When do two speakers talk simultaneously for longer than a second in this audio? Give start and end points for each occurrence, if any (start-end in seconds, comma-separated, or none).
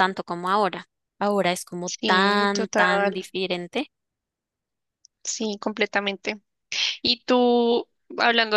1.8-3.2